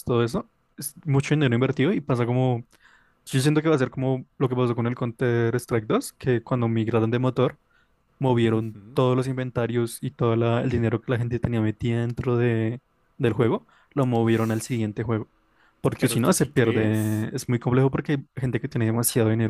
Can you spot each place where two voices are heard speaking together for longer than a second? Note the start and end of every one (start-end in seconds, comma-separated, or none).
16.0-17.3